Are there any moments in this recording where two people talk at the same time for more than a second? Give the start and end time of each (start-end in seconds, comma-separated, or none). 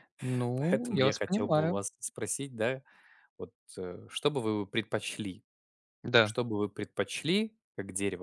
0.6-1.8